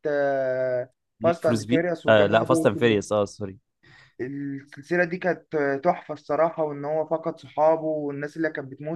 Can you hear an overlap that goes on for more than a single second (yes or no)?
yes